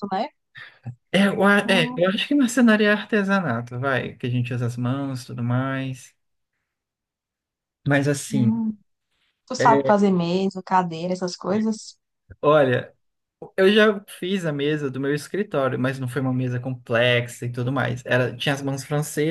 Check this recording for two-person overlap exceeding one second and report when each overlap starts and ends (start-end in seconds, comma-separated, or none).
none